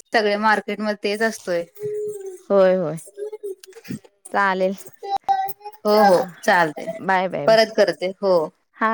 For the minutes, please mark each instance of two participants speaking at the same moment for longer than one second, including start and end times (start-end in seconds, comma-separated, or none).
none